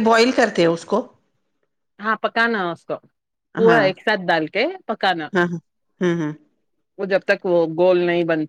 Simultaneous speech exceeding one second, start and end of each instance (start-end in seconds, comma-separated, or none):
none